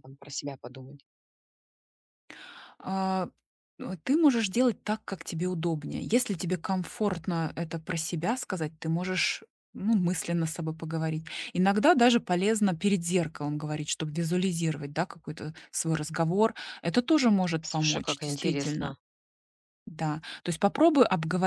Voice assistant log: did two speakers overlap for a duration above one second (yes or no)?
yes